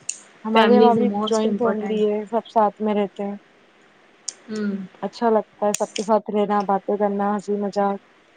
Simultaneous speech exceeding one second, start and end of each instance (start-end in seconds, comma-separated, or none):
0.5-2.0